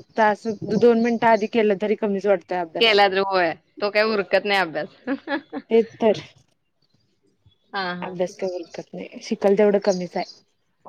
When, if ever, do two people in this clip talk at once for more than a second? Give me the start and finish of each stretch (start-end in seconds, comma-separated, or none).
none